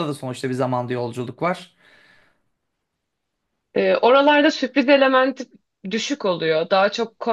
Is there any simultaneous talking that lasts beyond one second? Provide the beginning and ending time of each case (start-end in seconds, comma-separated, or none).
none